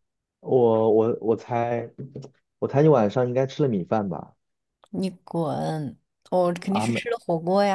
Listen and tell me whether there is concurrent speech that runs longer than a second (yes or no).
no